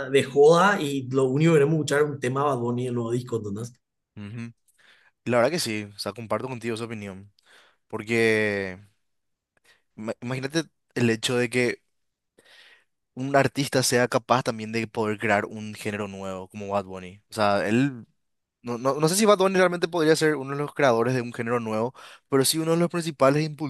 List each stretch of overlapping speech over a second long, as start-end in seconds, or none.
none